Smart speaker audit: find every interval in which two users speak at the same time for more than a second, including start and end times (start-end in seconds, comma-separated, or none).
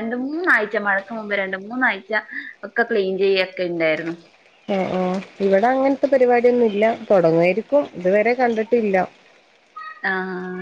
none